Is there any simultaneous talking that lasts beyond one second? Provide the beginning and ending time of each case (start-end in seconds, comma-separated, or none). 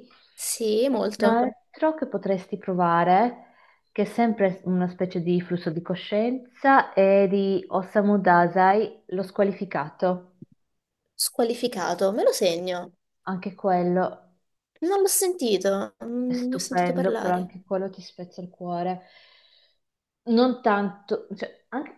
16.3-17.5